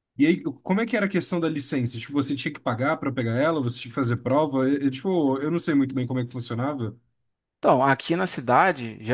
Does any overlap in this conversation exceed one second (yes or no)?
no